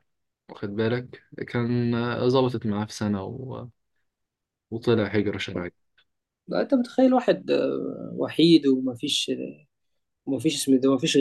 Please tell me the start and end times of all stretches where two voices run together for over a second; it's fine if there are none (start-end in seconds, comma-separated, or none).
none